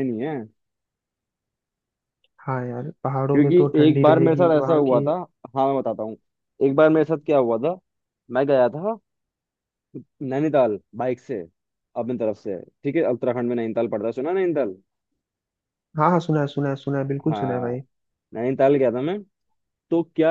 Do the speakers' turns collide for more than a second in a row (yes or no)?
yes